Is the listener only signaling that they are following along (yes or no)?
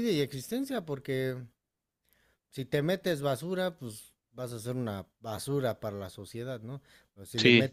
yes